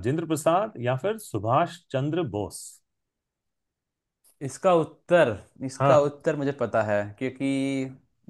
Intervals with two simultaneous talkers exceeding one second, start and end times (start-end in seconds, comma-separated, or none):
none